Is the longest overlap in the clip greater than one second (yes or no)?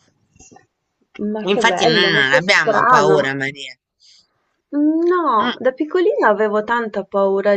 yes